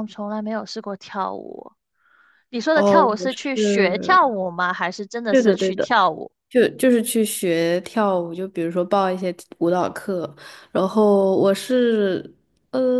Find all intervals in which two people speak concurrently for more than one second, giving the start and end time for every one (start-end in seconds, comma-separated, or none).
2.7-4.2